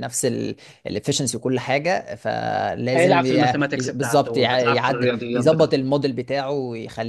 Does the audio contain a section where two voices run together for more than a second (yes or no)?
yes